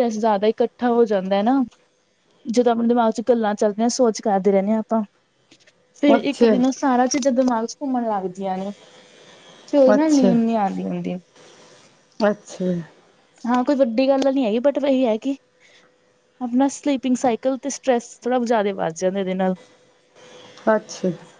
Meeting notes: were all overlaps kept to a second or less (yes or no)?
yes